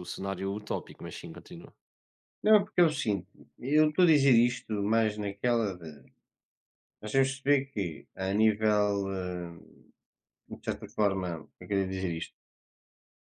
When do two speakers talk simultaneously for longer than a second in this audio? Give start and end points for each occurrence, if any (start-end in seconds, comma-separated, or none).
none